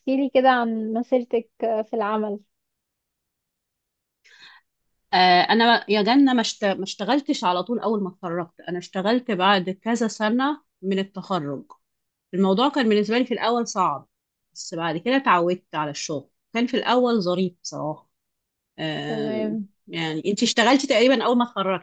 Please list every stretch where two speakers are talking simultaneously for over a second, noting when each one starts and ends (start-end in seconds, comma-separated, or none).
none